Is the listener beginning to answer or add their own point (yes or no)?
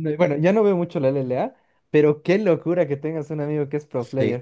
yes